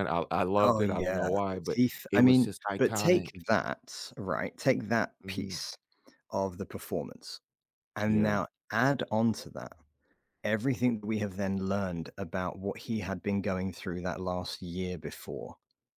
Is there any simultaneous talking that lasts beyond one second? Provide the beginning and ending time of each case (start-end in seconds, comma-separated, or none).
0.6-3.4